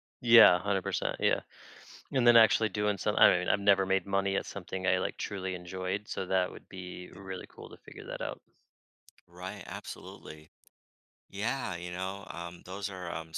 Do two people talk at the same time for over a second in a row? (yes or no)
no